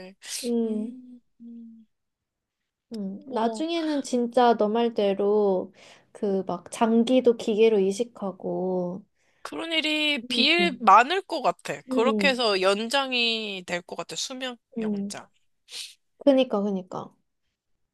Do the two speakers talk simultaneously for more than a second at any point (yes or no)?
no